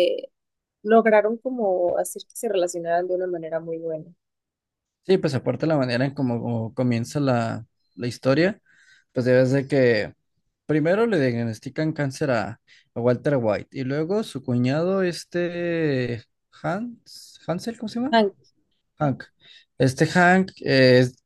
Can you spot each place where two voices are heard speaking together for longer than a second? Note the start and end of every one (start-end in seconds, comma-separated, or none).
none